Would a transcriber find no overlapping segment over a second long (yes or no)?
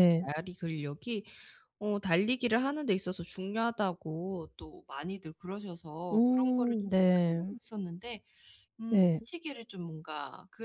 no